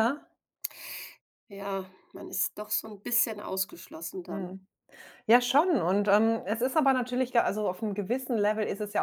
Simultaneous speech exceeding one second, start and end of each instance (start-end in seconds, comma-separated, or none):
none